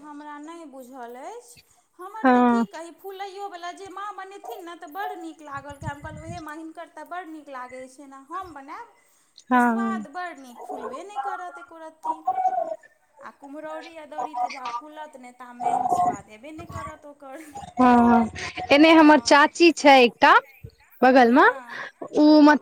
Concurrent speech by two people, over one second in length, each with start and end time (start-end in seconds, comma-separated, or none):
none